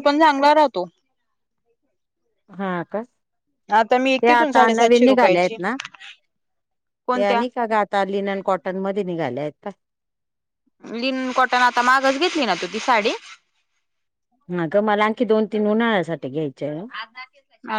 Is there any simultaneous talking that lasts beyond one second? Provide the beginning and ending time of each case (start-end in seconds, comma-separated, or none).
4.2-5.5